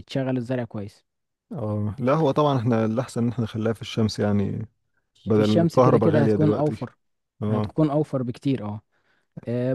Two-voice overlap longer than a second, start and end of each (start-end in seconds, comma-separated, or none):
5.3-6.9